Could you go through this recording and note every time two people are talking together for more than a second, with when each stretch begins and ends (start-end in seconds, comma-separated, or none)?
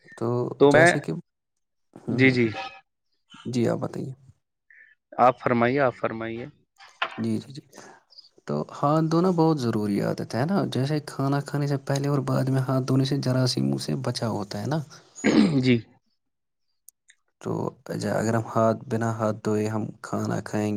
none